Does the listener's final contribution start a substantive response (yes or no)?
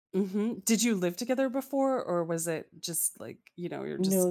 yes